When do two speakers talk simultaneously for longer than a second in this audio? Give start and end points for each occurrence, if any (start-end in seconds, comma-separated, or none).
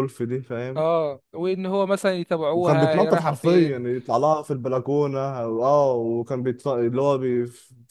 2.5-3.9